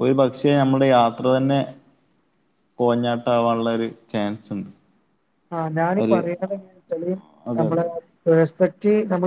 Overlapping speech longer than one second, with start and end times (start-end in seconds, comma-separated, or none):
none